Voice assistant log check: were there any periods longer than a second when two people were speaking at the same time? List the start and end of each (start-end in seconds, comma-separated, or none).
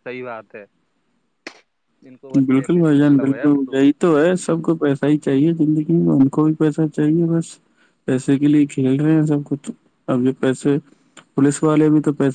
2.5-3.8